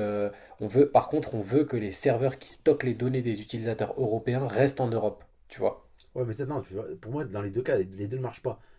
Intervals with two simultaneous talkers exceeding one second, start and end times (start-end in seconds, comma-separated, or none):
none